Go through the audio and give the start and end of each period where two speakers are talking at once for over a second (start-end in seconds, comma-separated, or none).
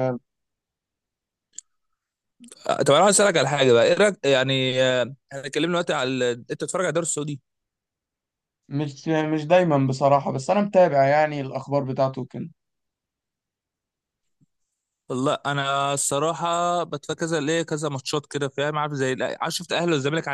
none